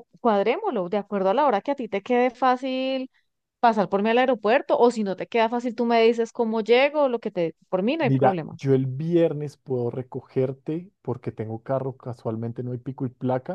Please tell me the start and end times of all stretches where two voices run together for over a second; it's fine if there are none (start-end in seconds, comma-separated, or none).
none